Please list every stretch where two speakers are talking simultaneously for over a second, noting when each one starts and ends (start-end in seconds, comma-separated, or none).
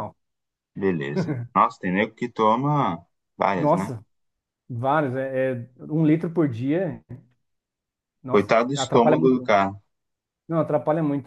8.3-9.5